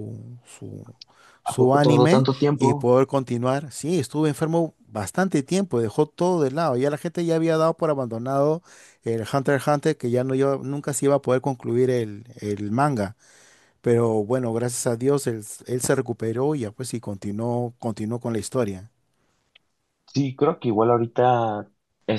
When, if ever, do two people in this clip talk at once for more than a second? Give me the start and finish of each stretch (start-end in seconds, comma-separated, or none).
1.4-2.9